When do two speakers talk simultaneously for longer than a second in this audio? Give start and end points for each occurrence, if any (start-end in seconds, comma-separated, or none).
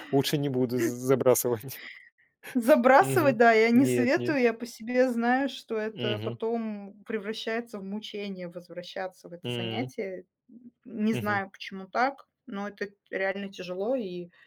3.0-4.4